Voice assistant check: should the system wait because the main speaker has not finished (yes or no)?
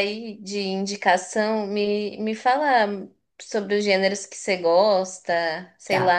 no